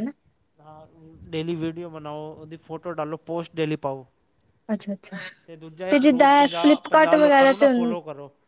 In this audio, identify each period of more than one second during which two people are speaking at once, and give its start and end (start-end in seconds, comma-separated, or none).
6.0-7.7